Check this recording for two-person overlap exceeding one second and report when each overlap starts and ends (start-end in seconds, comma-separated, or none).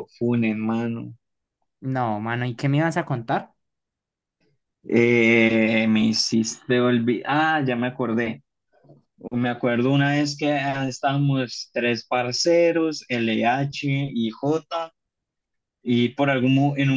none